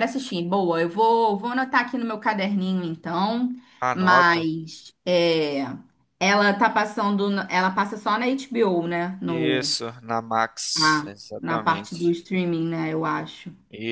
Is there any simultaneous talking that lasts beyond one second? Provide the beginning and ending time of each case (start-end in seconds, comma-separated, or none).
10.7-12.2